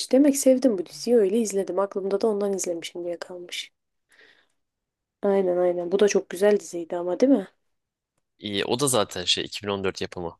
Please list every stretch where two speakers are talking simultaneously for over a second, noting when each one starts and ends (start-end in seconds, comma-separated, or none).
none